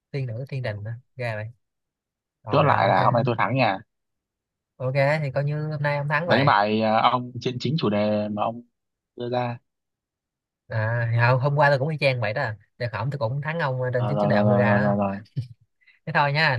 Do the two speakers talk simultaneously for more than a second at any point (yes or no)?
yes